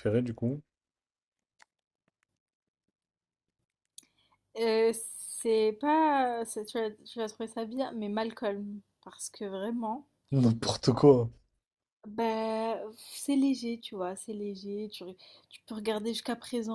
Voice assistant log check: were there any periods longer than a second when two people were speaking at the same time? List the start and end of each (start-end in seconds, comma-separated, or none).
none